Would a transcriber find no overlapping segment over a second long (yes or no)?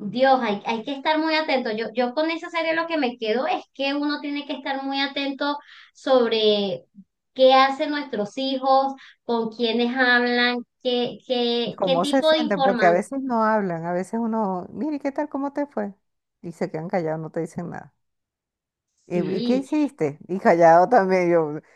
no